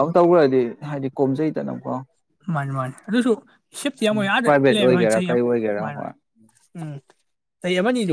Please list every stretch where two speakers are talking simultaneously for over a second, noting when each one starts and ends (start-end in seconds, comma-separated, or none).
4.4-6.0